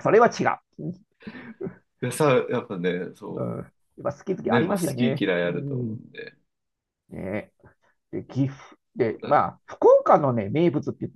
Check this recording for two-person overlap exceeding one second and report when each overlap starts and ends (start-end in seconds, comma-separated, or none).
4.5-6.0